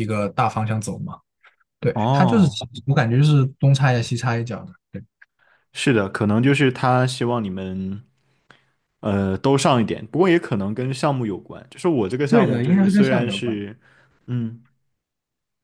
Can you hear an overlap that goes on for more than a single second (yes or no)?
yes